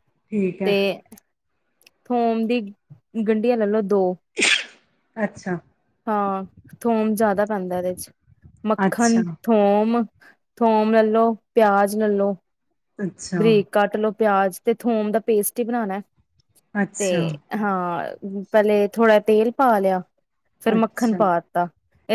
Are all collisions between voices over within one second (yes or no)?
yes